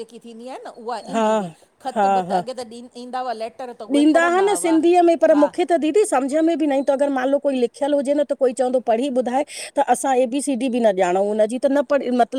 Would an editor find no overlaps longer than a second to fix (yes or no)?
yes